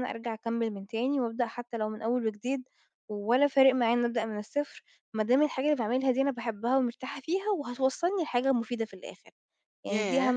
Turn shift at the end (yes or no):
yes